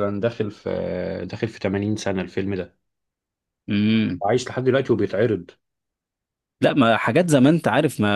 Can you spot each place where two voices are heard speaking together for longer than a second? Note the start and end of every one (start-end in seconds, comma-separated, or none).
none